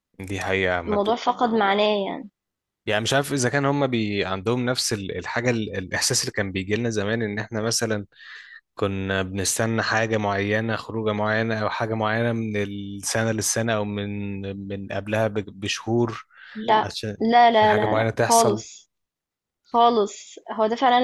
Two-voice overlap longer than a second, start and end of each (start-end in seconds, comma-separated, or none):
16.8-18.6